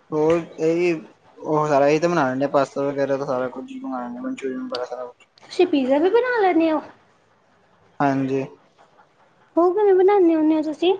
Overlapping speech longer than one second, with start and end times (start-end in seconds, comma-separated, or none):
none